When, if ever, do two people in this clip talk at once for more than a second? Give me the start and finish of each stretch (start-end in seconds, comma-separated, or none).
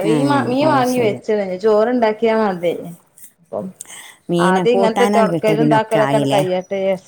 4.5-6.0